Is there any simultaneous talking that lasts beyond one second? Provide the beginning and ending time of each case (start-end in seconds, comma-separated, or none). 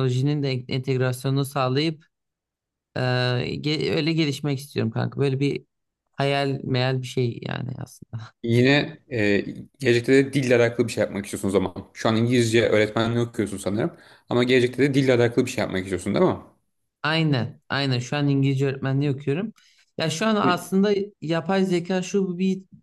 none